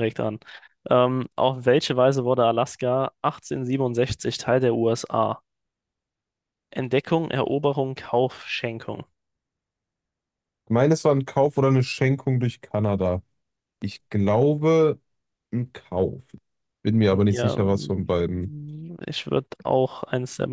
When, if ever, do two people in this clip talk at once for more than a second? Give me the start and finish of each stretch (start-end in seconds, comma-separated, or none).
17.2-18.5